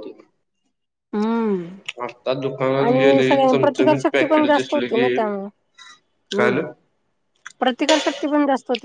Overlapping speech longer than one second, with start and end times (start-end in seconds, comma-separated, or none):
2.9-5.1